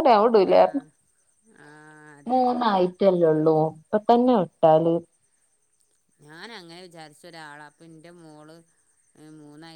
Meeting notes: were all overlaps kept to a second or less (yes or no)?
yes